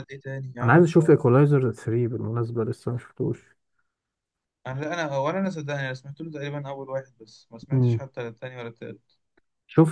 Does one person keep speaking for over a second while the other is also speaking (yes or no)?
no